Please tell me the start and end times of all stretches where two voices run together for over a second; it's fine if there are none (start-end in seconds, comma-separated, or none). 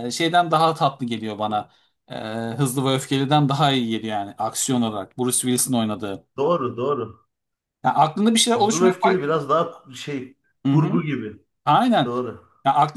none